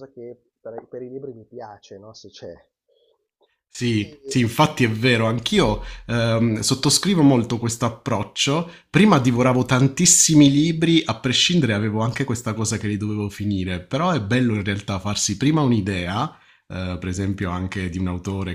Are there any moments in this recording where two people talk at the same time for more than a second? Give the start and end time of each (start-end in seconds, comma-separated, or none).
none